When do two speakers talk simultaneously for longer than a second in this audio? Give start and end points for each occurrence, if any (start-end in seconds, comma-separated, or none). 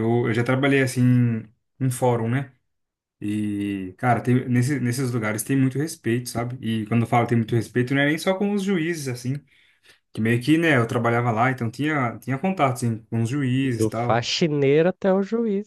none